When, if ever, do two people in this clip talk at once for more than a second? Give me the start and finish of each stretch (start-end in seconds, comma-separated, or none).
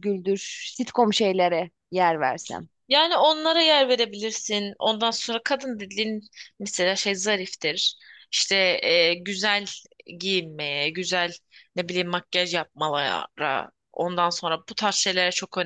none